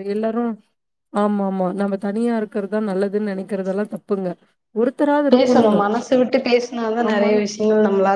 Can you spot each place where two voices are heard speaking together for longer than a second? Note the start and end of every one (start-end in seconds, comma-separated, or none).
none